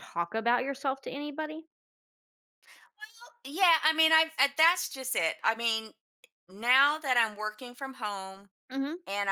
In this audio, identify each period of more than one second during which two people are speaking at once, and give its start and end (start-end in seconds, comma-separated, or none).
none